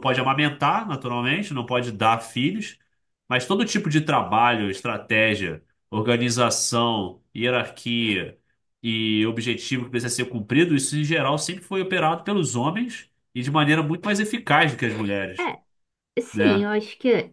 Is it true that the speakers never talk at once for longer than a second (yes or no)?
yes